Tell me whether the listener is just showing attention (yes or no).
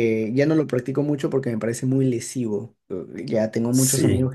yes